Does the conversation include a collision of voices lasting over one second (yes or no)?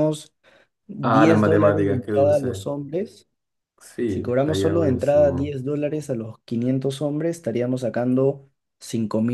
yes